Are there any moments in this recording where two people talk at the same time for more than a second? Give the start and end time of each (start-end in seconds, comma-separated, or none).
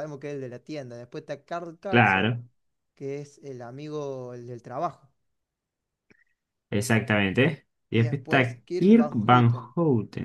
7.9-9.8